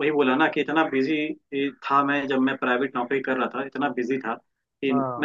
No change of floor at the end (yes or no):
yes